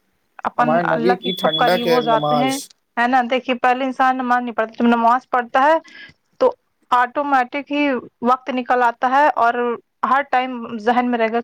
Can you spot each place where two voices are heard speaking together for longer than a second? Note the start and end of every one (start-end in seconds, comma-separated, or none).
0.6-2.5